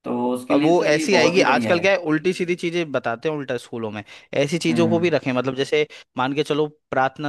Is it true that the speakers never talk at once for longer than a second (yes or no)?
no